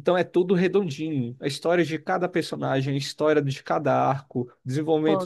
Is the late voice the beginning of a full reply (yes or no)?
no